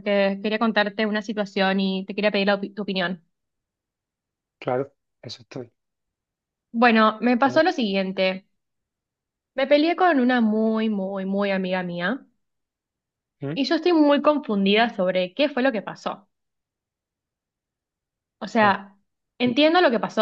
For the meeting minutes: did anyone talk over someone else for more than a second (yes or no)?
no